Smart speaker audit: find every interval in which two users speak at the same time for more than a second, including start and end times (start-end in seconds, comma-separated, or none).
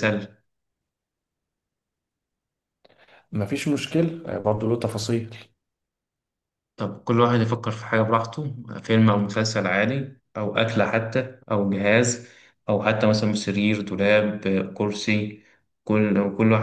none